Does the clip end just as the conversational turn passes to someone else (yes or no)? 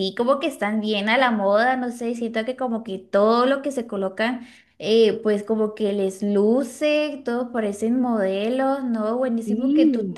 no